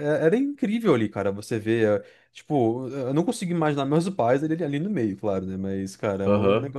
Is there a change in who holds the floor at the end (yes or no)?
no